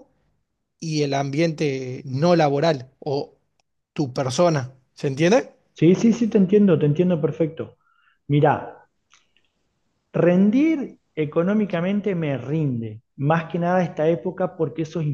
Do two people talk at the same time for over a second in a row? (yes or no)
no